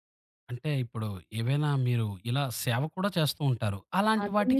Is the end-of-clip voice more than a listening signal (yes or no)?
yes